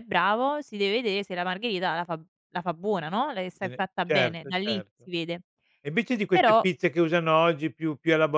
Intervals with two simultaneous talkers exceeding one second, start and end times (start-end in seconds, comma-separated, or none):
3.6-5.1